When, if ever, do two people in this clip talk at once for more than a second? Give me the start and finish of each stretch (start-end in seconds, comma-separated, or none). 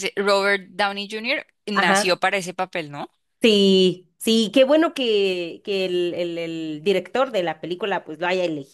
none